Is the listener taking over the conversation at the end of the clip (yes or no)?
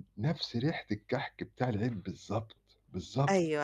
yes